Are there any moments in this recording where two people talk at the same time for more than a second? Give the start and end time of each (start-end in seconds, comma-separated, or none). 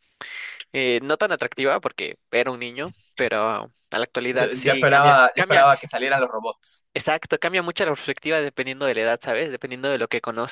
4.3-5.7